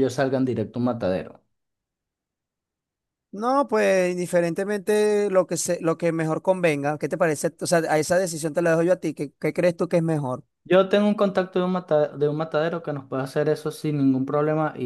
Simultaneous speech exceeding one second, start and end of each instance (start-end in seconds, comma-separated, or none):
none